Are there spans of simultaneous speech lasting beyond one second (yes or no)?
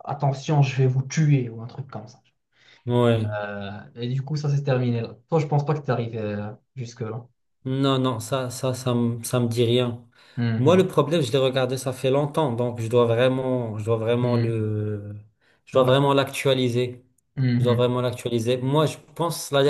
no